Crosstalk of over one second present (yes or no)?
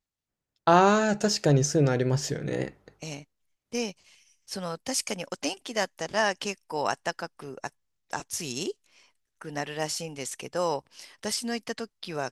no